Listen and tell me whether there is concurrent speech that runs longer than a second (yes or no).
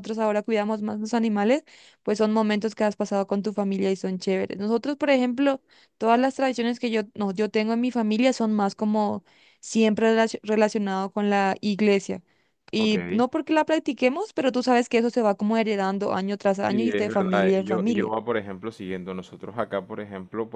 yes